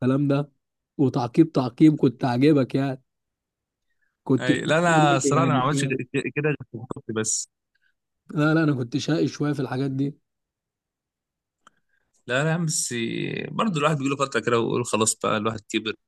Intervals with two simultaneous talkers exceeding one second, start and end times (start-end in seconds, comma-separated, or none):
4.4-6.1